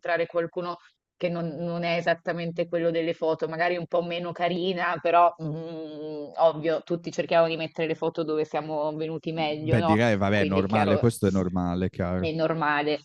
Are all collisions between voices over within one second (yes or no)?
no